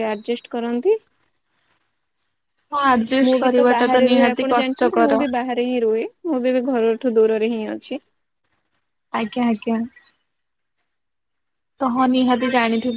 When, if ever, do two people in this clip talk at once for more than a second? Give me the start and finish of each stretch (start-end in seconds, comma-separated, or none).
3.3-5.2